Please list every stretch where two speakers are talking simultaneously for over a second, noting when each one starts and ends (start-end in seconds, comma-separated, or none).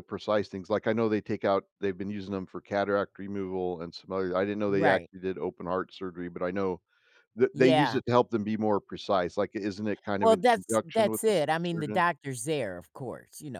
10.2-12.0